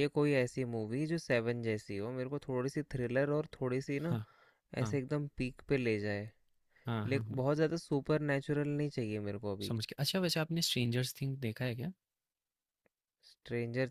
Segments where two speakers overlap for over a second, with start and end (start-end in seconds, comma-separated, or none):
none